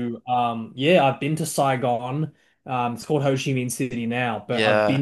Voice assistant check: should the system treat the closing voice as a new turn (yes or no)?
no